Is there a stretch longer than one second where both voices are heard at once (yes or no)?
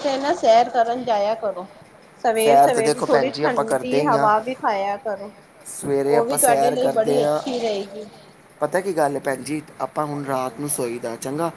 yes